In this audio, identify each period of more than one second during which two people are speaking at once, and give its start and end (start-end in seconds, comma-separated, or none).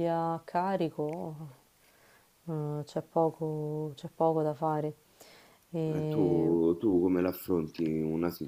none